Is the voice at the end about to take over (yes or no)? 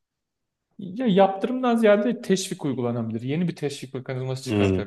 no